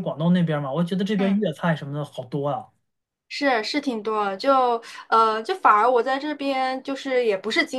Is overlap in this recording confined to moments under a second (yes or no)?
yes